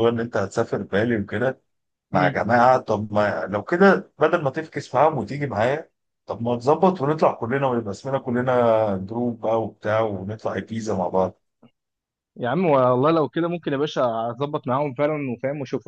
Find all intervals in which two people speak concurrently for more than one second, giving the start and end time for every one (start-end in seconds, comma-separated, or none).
none